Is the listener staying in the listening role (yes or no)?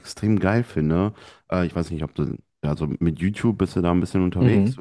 no